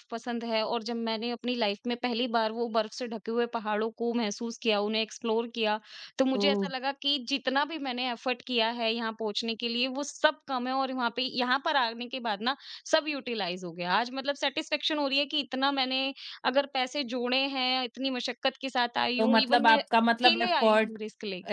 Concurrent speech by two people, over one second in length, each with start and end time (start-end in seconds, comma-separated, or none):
19.2-21.0